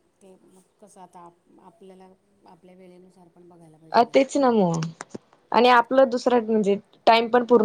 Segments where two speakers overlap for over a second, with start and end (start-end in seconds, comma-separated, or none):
none